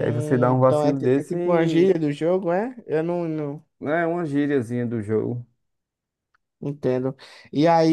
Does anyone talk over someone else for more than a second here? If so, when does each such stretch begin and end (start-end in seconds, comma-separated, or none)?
0.5-1.8